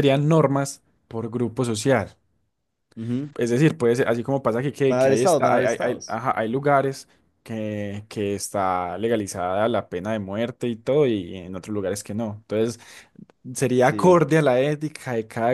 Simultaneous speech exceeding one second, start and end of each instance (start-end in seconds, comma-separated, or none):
4.9-6.2